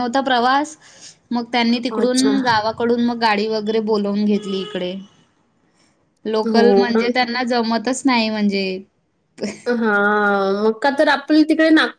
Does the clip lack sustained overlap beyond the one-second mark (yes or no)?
yes